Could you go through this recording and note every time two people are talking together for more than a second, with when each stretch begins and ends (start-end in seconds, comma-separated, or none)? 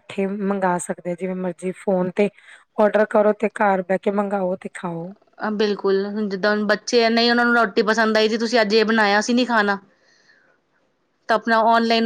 none